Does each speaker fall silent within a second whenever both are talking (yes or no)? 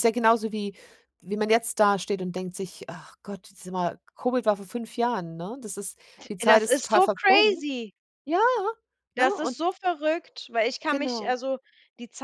no